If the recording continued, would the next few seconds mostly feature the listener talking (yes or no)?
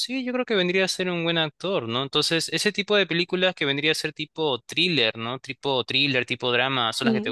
yes